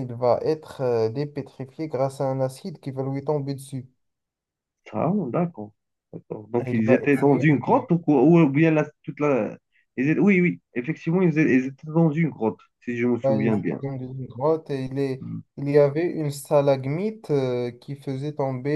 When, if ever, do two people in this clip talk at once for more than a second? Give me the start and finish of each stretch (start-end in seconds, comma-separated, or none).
6.6-7.9